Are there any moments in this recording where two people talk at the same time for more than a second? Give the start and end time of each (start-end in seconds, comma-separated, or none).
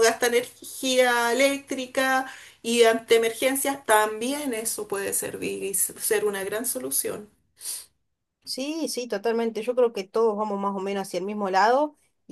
none